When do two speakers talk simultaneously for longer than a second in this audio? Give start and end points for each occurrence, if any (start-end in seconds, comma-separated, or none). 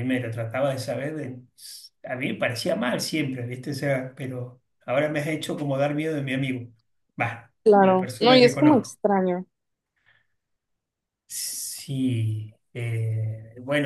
7.6-9.0